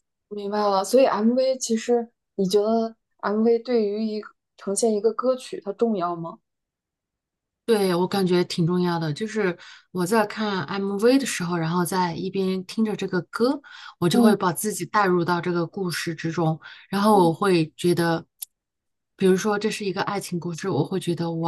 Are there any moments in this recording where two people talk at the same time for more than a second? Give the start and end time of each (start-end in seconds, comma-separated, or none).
none